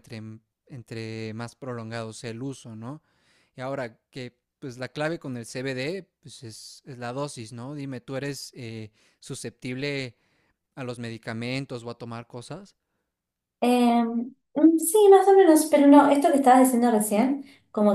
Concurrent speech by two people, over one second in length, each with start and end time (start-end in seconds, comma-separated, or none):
none